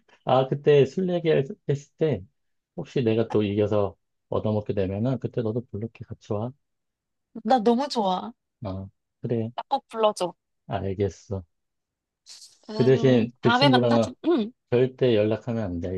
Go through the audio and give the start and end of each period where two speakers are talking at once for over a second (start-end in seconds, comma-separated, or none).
12.7-14.1